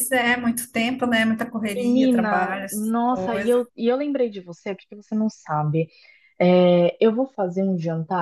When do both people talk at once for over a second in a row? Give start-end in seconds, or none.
1.8-3.6